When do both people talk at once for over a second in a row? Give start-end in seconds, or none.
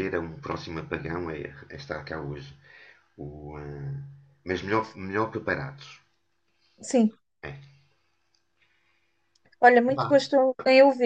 none